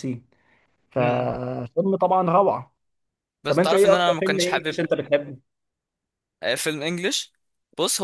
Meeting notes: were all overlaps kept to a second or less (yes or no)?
no